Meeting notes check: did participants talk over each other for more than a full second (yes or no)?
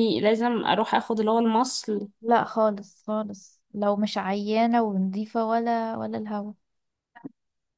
no